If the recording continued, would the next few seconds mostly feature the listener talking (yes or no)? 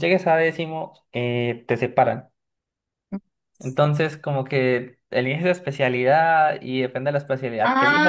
yes